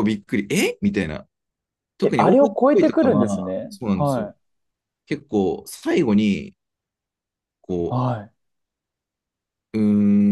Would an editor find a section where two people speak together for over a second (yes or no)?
yes